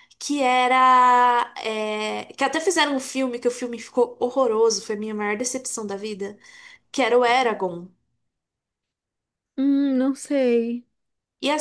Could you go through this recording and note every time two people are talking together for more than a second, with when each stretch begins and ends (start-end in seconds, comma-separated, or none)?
none